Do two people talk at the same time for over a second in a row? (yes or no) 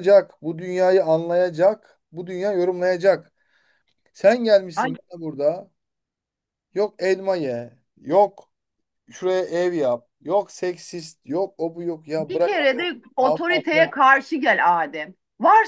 yes